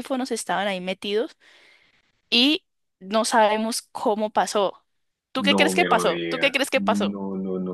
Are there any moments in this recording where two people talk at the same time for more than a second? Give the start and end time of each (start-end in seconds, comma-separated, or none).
5.4-7.2